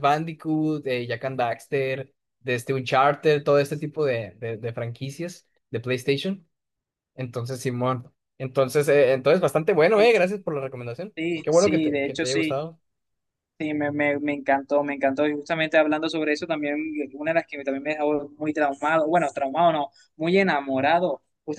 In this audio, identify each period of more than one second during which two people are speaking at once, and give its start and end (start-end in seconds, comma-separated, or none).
11.2-12.6